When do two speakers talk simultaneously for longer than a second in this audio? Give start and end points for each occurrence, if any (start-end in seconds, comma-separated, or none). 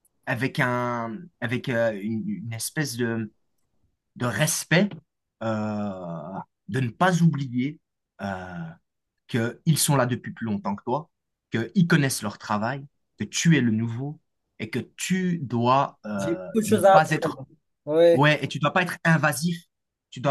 16.2-17.4